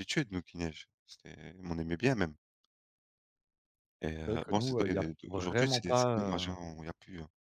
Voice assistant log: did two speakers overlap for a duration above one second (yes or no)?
yes